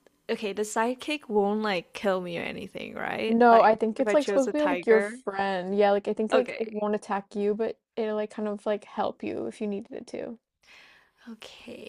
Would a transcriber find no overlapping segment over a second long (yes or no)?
no